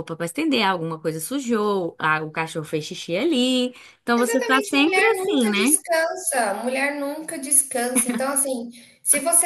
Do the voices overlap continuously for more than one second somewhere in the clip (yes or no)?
yes